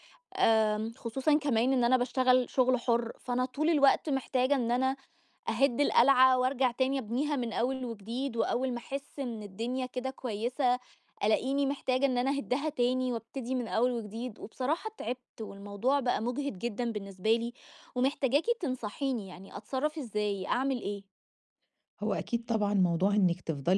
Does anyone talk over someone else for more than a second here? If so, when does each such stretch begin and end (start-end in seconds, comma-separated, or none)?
none